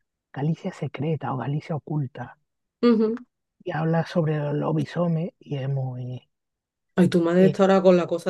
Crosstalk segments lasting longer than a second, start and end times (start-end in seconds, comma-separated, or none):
none